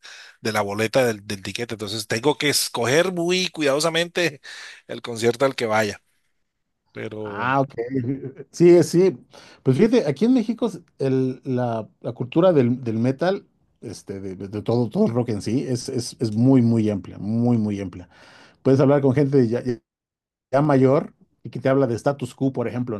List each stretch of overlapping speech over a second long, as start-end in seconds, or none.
none